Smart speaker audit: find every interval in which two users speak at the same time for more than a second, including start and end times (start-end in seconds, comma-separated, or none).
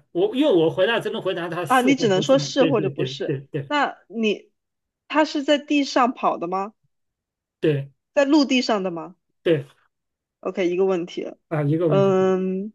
1.7-3.7